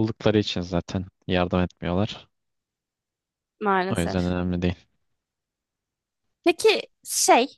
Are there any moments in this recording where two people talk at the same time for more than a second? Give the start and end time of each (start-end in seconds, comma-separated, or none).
none